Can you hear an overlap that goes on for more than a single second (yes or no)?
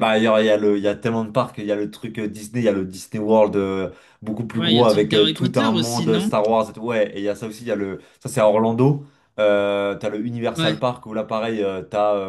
yes